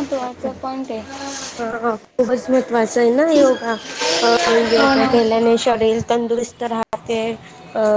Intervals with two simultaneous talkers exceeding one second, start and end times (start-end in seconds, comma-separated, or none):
none